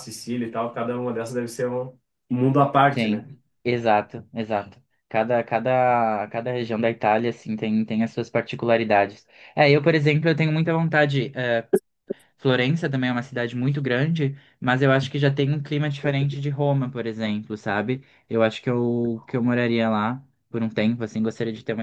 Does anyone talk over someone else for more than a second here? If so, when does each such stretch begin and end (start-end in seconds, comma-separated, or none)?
none